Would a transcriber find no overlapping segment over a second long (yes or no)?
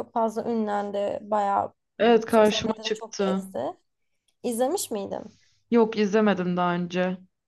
no